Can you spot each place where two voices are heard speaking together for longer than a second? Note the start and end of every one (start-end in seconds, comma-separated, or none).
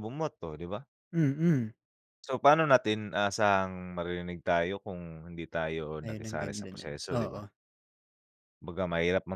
6.0-7.4